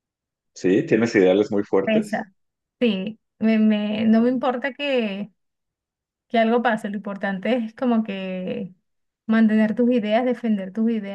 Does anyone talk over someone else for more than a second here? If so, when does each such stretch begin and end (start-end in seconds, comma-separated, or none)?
none